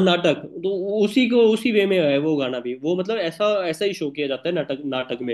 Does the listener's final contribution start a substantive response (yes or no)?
yes